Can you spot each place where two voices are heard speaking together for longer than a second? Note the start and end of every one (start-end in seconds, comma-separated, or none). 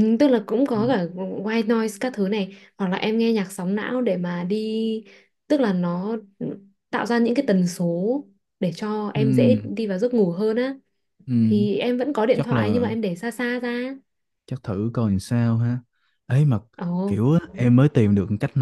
none